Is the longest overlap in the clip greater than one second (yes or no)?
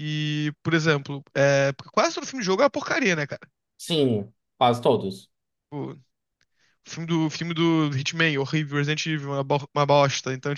no